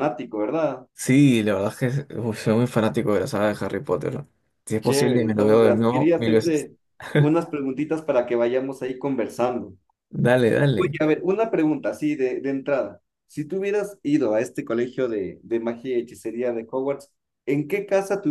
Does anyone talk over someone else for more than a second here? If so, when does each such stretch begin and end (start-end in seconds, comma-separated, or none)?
4.8-6.7